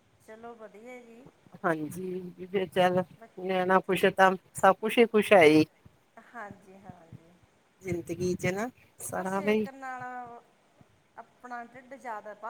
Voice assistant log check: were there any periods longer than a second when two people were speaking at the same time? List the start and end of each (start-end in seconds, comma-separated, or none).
none